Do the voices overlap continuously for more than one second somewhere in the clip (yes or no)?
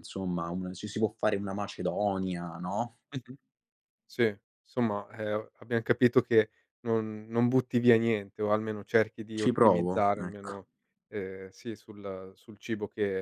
yes